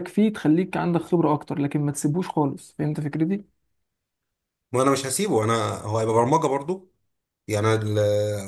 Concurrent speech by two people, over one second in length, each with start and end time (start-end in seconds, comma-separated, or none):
none